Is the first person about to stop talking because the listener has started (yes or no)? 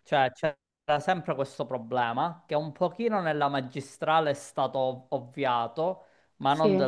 no